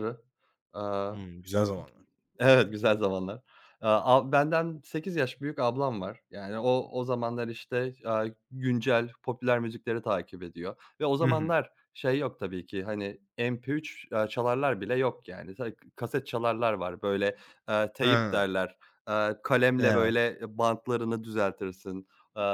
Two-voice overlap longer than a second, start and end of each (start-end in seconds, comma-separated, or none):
none